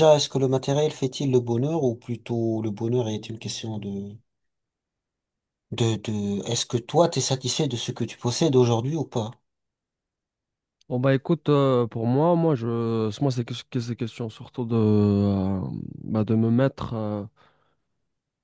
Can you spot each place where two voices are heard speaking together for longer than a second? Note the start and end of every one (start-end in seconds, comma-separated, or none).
none